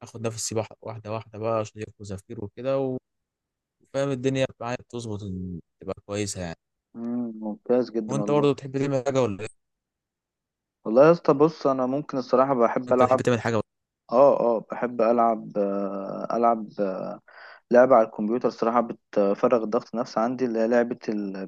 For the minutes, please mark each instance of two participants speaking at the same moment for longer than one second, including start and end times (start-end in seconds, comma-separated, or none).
none